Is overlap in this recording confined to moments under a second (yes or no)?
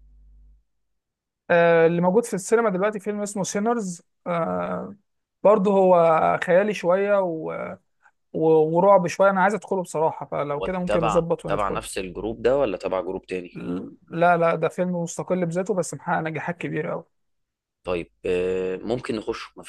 no